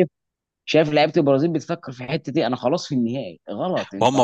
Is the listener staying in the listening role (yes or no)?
no